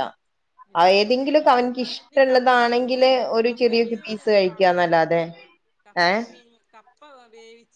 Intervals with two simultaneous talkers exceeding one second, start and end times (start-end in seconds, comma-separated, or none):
2.0-5.0